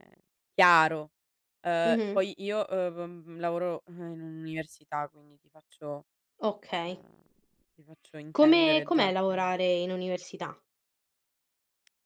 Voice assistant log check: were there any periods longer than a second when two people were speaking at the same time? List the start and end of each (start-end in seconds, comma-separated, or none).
8.3-9.5